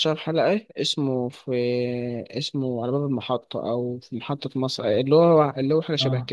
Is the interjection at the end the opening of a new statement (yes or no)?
yes